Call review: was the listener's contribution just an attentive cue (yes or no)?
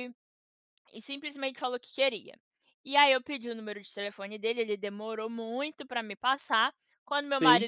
yes